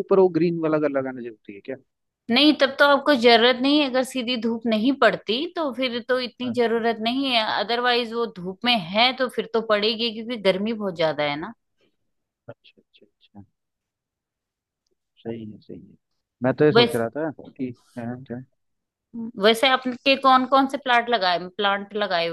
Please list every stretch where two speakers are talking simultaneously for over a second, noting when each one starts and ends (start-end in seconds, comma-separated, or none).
none